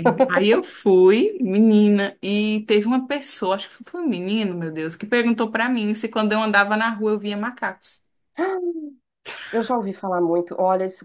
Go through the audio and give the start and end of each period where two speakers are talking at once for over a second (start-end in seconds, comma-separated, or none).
none